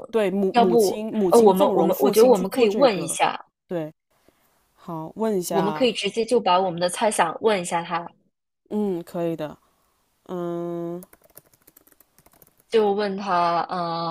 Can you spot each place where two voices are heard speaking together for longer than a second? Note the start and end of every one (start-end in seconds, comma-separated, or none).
0.5-3.2